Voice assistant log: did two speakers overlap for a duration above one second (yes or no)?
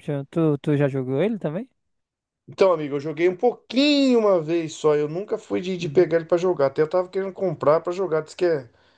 no